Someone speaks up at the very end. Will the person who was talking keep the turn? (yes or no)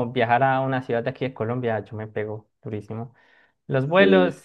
yes